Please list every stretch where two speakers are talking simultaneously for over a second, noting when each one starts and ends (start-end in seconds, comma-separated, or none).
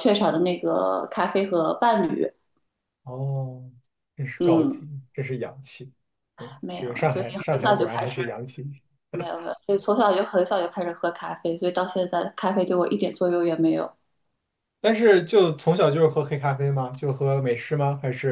6.6-8.2